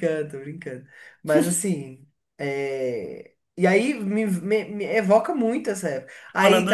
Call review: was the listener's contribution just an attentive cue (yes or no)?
no